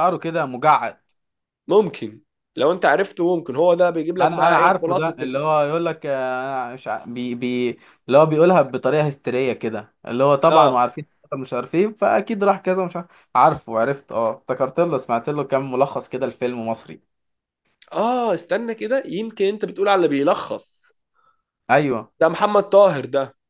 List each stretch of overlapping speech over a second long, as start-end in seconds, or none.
4.2-5.4